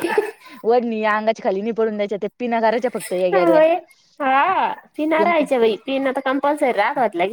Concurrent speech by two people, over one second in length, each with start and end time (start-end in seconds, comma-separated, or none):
none